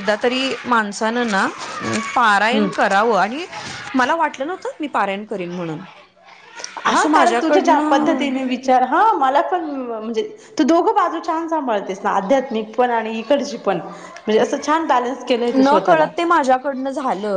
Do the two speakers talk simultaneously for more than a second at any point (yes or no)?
yes